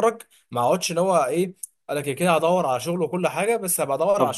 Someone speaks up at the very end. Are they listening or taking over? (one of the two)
taking over